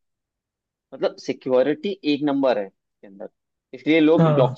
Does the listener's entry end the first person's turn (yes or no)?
no